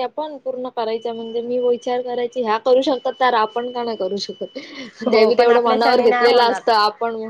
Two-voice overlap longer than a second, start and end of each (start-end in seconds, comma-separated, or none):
5.1-6.6